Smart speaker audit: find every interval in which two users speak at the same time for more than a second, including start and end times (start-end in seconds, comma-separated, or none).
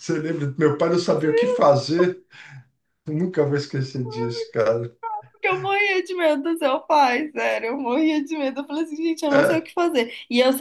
none